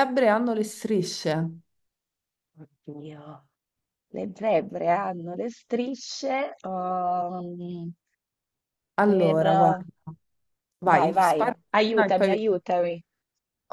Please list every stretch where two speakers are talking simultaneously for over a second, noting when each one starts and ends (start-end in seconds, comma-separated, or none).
10.9-12.5